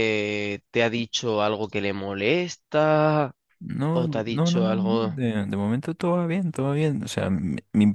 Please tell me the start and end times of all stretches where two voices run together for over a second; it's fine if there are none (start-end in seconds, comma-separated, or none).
3.9-5.1